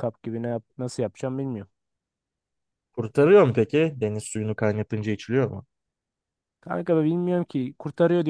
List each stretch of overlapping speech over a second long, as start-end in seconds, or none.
none